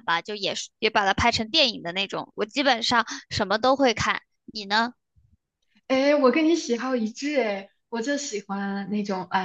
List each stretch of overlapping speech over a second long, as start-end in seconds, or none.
none